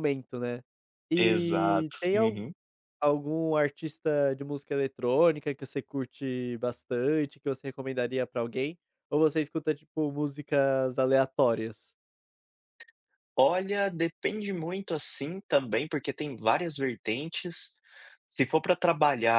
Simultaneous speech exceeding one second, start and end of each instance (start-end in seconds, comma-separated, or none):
1.2-2.4